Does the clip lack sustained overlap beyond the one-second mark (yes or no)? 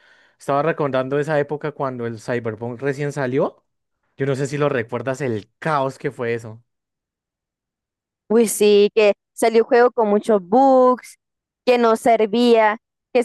yes